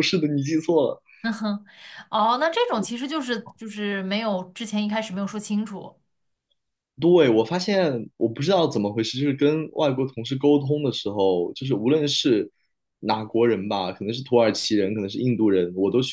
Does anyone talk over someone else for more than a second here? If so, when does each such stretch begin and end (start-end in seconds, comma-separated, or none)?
none